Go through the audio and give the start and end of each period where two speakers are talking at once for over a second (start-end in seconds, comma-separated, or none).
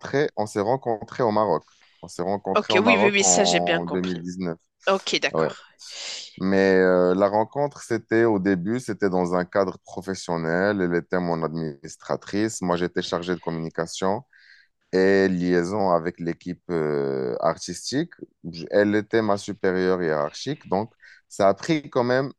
2.5-4.2